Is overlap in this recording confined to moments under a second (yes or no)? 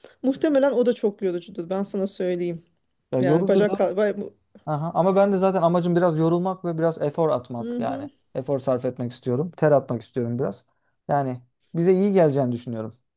yes